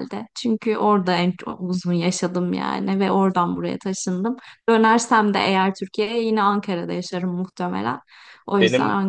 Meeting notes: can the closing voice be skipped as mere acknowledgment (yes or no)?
no